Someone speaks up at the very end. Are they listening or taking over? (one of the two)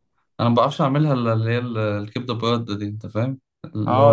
taking over